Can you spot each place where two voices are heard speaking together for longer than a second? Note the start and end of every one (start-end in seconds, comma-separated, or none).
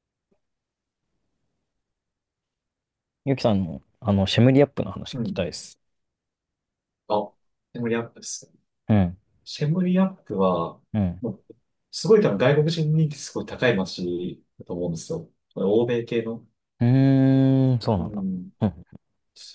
none